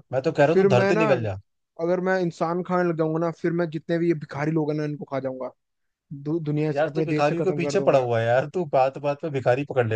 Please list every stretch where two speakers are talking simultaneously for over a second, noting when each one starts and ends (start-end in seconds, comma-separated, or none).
6.7-8.1